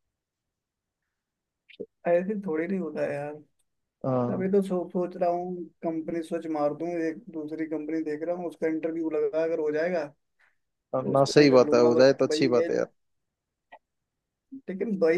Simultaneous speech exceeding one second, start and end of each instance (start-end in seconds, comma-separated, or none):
11.1-12.7